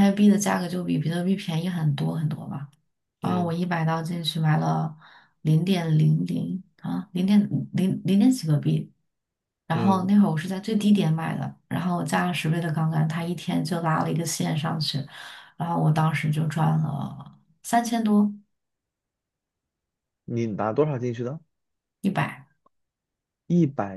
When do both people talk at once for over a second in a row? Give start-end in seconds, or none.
none